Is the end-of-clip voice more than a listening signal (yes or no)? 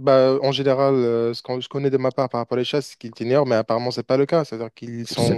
yes